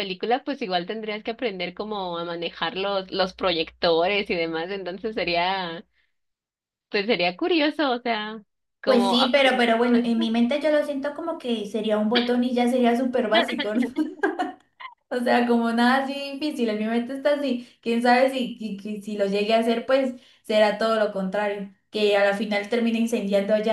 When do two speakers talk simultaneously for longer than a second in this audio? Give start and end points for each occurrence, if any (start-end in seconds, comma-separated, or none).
8.8-10.3